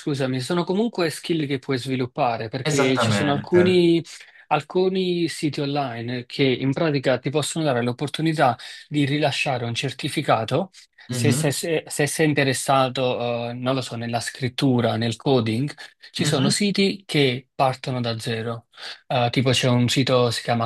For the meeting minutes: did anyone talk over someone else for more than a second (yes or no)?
yes